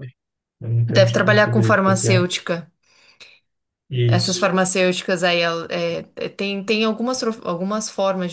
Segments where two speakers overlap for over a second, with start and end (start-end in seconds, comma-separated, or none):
0.9-2.2